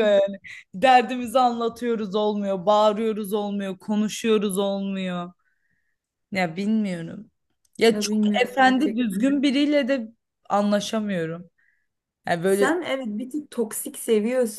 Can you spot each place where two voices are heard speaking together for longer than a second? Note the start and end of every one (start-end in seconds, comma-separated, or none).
7.9-9.3